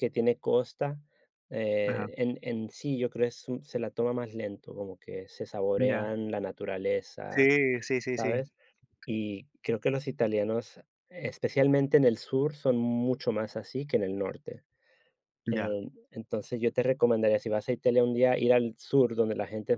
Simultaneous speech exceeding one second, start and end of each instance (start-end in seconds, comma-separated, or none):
none